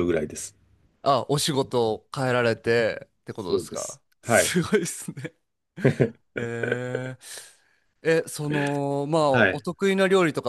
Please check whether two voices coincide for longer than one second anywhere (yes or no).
yes